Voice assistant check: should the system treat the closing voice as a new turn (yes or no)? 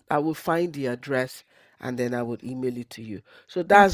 no